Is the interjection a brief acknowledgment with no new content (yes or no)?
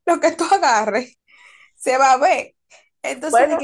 yes